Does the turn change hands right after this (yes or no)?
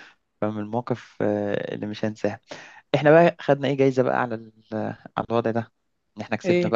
no